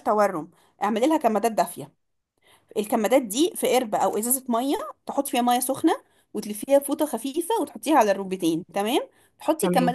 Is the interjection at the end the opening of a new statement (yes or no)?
no